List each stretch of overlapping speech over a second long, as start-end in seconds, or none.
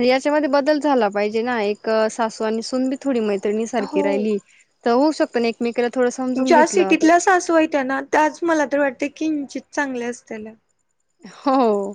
none